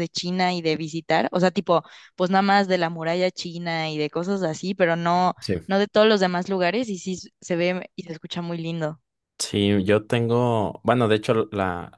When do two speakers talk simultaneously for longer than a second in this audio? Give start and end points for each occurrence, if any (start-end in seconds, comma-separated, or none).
none